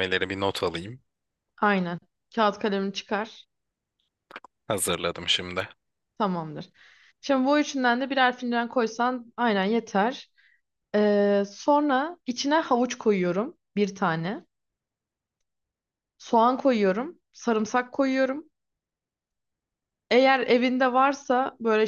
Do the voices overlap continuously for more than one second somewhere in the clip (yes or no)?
no